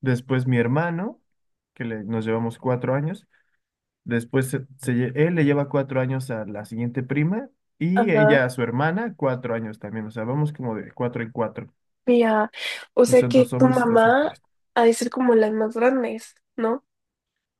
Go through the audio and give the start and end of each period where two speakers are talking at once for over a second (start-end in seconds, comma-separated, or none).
13.1-14.3